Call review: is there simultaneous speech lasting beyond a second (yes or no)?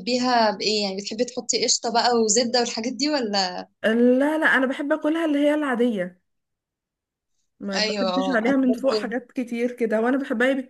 yes